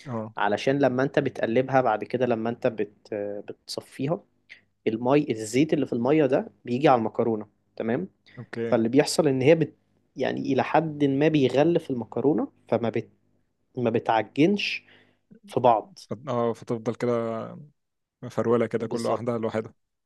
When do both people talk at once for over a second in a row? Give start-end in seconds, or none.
none